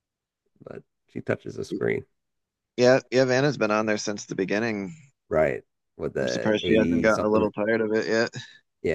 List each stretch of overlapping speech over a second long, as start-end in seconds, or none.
6.2-7.5